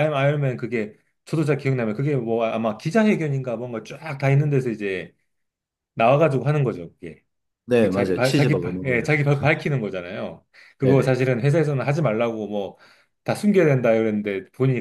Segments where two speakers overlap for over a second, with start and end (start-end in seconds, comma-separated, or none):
7.8-9.2